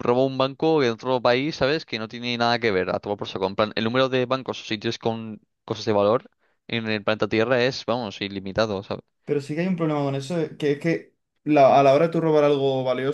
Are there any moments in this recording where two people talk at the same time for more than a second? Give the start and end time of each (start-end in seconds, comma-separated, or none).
none